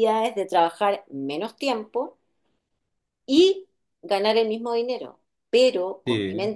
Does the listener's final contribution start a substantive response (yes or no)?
no